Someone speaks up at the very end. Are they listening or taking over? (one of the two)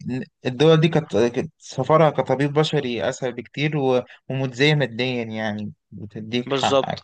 taking over